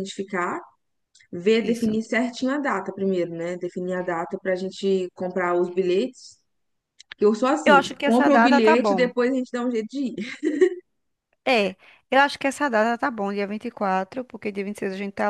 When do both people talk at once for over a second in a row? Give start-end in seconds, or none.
7.7-9.1